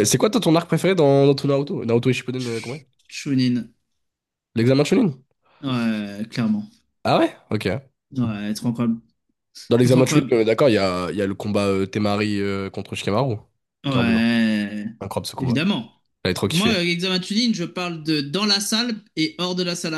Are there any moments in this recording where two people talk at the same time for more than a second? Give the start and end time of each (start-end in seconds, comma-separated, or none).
none